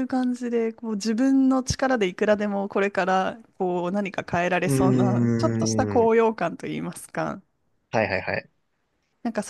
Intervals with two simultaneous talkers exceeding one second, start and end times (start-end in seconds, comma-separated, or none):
4.7-6.1